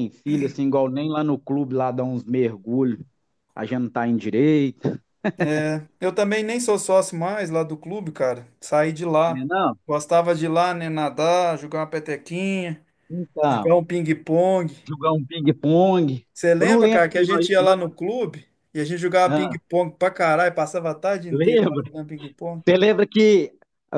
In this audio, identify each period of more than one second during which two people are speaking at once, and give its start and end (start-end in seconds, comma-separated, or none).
16.3-17.9